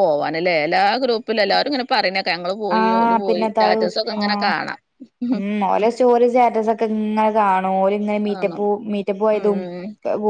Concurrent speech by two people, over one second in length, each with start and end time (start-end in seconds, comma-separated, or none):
2.8-4.5